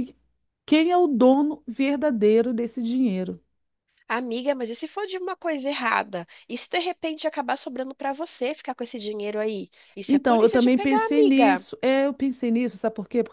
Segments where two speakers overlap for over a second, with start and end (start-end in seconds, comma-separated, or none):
10.1-11.7